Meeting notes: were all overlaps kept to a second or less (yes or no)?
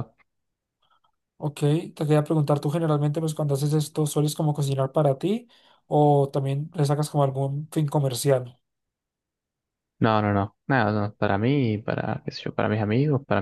yes